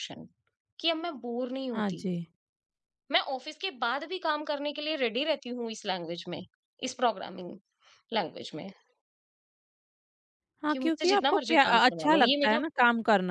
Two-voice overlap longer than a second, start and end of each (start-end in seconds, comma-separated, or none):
10.7-12.6